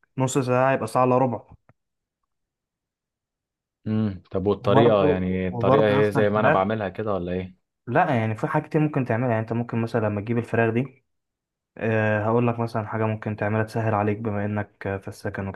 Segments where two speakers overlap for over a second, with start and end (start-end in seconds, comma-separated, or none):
4.6-6.6